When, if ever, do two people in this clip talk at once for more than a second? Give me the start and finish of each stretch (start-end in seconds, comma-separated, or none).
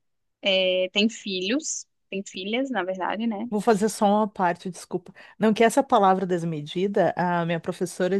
none